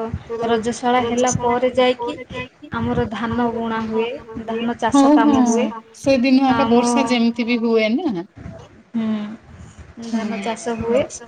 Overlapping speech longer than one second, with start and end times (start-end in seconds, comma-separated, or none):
none